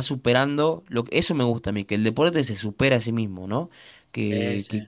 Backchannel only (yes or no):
yes